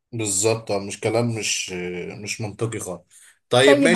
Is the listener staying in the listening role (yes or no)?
no